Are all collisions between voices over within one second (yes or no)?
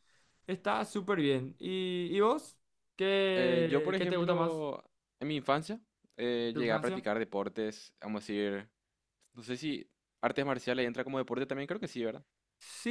no